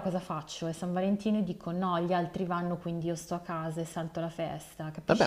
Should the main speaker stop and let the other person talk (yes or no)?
yes